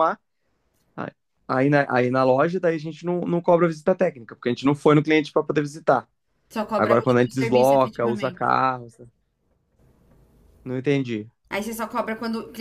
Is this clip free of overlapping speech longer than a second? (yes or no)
no